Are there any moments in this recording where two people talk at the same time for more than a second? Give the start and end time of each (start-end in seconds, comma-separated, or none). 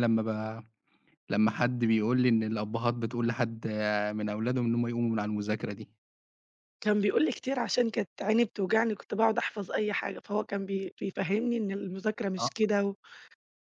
none